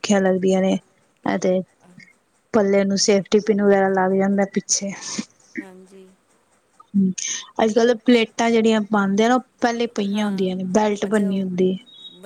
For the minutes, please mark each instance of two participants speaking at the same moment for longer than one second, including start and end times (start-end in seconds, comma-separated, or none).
10.2-11.4